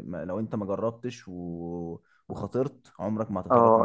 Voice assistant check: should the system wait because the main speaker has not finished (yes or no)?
no